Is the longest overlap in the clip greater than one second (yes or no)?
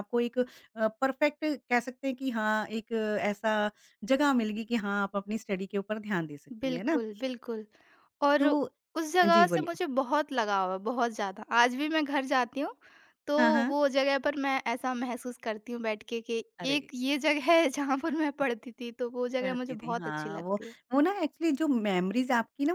yes